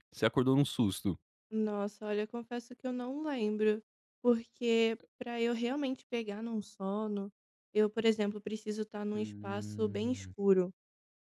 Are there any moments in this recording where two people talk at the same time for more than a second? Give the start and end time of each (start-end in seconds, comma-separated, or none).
9.1-10.3